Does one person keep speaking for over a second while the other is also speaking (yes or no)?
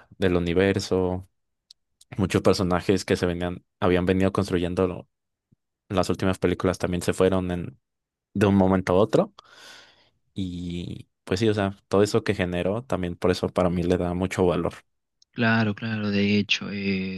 no